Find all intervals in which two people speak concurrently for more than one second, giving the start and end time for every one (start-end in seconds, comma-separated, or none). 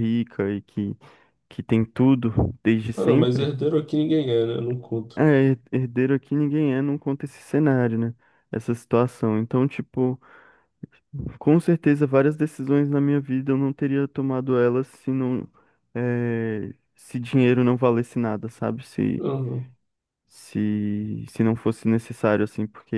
none